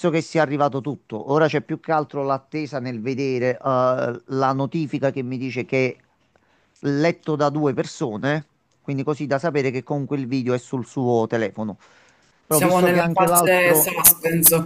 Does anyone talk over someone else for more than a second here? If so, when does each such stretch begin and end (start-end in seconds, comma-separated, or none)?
12.5-13.9